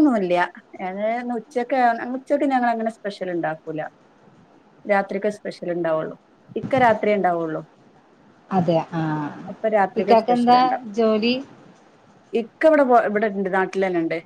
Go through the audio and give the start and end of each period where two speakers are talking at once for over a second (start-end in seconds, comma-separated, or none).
none